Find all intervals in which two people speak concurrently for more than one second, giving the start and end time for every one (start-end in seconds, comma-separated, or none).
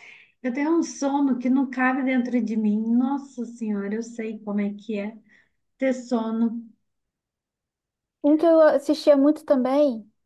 none